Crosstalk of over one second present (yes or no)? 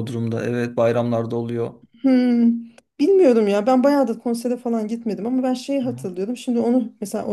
no